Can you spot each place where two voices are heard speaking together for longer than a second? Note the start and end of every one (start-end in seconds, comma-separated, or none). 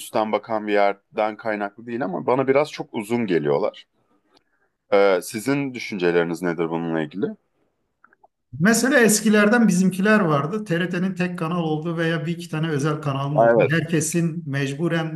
none